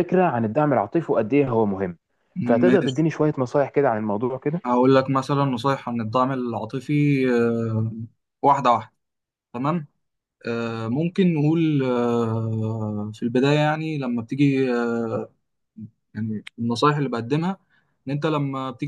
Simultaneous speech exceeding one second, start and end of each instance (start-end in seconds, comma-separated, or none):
none